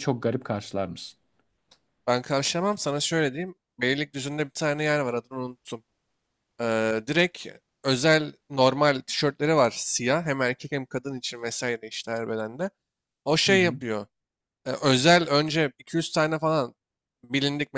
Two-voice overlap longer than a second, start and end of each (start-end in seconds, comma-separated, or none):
none